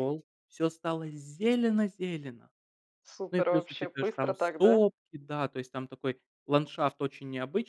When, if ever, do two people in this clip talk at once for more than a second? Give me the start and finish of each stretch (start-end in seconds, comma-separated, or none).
3.3-4.8